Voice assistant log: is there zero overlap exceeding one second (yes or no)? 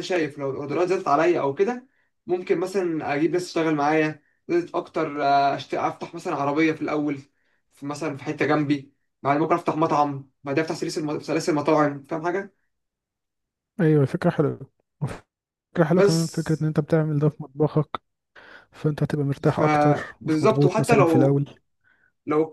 no